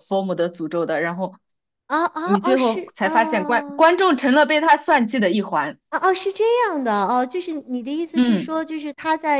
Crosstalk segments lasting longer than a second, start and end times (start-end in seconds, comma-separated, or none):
2.2-3.9